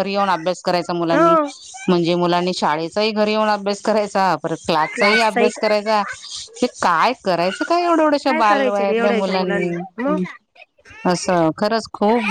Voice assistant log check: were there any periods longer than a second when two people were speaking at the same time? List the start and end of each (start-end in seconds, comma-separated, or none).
8.3-9.7